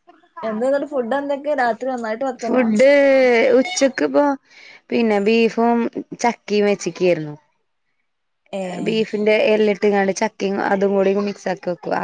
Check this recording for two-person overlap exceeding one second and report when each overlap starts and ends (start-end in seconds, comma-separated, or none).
none